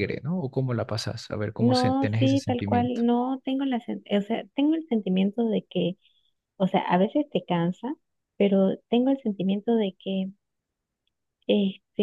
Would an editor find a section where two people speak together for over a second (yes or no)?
yes